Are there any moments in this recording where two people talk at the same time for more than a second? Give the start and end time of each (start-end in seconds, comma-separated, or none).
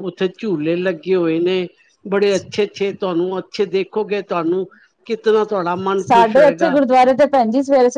none